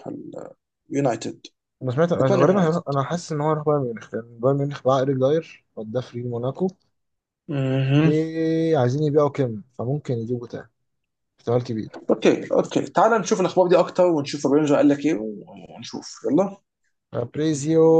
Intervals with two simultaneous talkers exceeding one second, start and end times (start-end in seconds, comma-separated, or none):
none